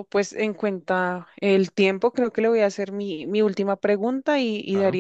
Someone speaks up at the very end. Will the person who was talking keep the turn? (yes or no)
yes